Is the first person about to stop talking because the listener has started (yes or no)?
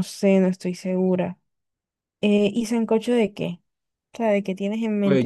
yes